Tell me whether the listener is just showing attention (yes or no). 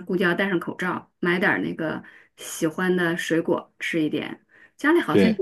yes